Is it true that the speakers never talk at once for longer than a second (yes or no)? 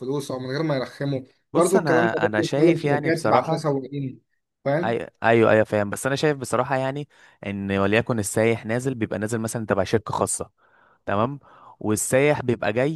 no